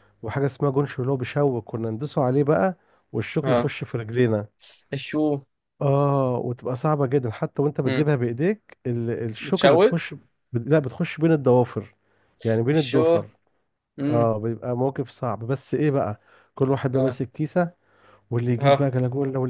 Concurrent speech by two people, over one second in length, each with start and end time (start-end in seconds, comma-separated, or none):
none